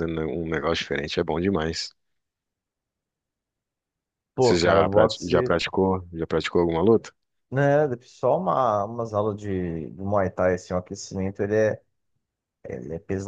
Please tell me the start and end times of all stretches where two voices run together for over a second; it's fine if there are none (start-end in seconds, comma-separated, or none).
4.4-5.6